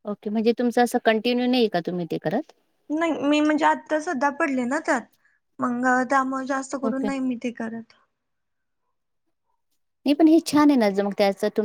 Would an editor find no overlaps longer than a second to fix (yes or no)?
yes